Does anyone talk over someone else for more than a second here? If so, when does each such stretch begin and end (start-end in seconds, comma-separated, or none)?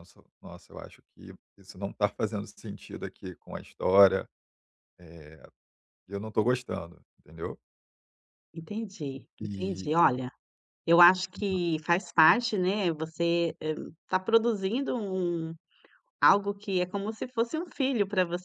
none